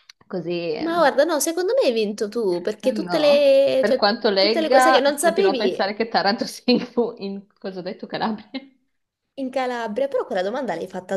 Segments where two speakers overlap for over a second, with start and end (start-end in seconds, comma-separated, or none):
2.9-5.9